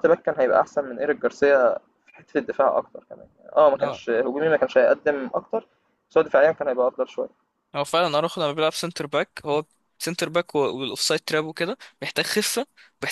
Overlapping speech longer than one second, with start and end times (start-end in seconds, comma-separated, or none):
none